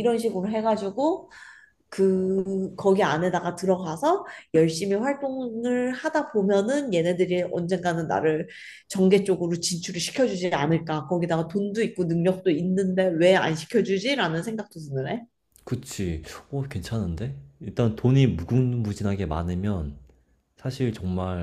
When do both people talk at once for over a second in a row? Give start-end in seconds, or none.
none